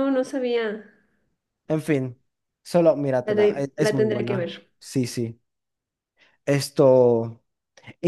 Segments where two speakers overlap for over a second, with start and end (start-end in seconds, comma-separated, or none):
3.2-4.5